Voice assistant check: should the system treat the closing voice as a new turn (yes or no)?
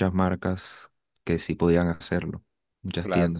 yes